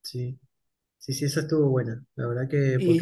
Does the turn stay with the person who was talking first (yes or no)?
no